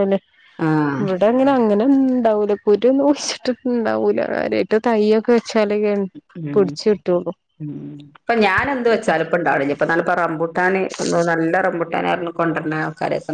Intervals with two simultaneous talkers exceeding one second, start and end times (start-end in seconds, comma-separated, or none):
none